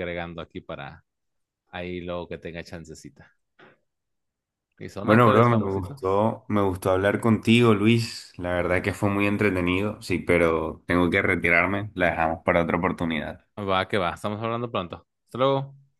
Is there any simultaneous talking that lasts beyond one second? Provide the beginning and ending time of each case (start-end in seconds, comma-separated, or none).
5.0-6.2